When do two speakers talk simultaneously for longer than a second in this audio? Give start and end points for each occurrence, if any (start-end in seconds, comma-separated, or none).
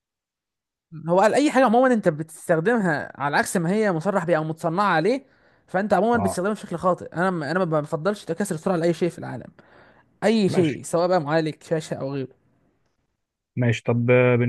none